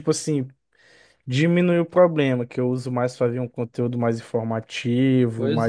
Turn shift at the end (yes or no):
yes